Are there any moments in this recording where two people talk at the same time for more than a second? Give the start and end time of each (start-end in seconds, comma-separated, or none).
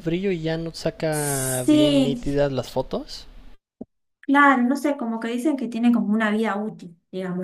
1.1-2.4